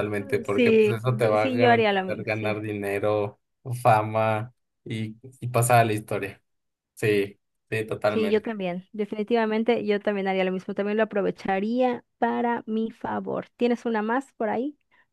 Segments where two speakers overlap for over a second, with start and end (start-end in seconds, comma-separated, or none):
0.5-2.5